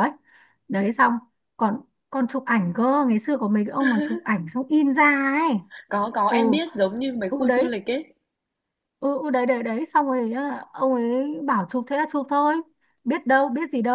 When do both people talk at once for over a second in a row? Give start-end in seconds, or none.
none